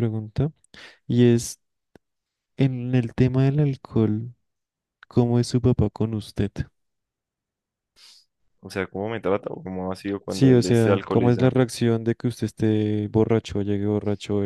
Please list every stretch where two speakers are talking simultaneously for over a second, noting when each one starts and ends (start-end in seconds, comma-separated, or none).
10.3-11.6